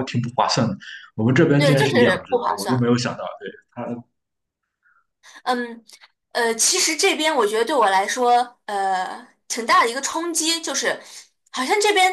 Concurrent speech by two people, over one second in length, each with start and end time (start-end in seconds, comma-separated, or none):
1.6-2.9